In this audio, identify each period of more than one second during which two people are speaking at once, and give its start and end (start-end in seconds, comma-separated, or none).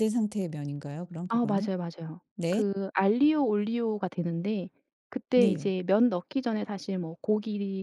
none